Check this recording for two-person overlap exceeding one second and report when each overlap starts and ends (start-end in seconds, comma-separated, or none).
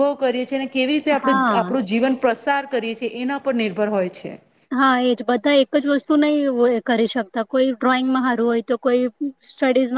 none